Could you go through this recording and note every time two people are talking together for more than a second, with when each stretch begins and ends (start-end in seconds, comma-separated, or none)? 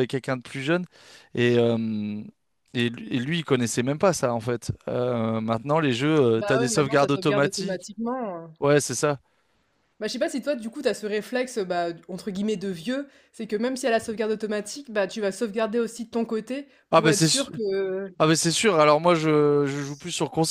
6.3-7.9